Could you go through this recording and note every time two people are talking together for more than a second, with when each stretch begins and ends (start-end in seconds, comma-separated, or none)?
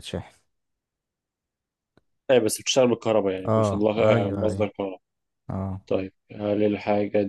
3.5-4.7